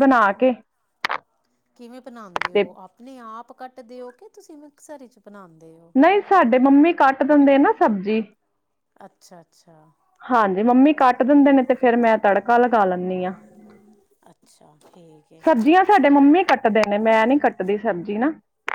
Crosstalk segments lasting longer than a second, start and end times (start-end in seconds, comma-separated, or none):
none